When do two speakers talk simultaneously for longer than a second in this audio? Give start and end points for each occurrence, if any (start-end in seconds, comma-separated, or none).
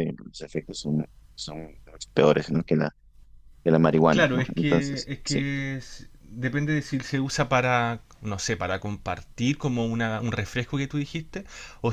4.1-5.5